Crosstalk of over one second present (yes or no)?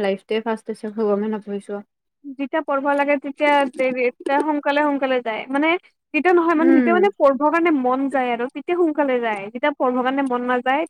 no